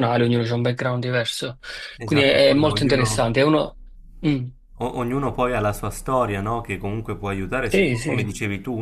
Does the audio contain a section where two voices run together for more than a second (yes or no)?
yes